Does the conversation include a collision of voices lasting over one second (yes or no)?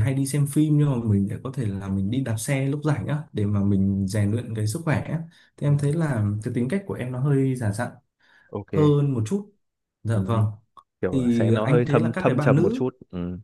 yes